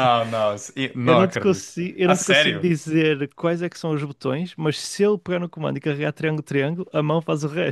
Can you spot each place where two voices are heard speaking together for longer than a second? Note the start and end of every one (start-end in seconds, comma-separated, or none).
1.0-2.6